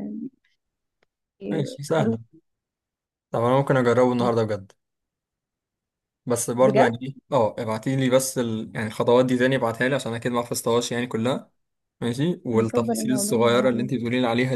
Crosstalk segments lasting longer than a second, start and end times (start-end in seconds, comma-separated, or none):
12.5-13.9